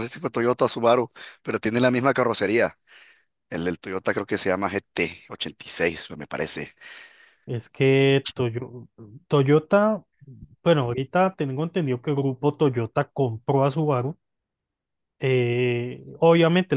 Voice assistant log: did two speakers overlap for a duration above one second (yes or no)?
no